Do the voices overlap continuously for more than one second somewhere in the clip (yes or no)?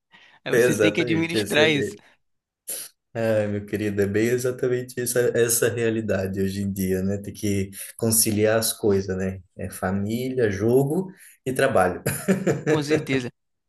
yes